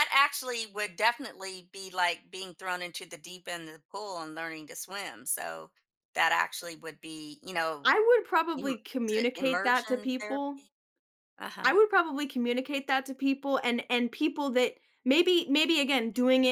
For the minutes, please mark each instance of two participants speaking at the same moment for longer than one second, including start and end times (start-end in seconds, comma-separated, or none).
8.6-10.7